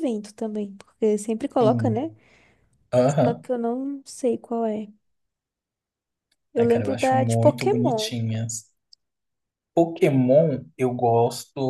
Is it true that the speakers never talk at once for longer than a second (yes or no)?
no